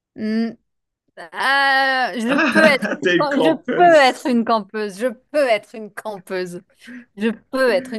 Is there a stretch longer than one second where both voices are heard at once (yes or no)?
yes